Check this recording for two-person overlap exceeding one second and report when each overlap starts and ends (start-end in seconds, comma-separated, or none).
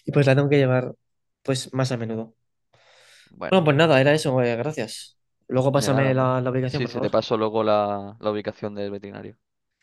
5.7-7.2